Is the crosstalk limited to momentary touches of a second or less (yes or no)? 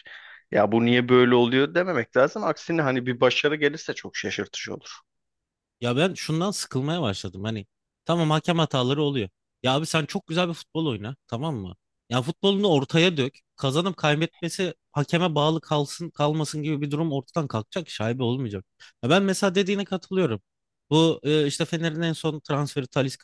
yes